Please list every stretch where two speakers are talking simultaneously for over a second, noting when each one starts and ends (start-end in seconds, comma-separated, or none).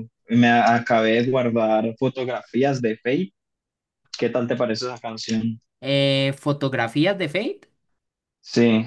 none